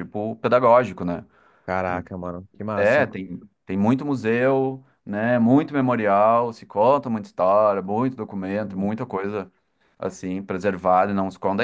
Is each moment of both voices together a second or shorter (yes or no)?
yes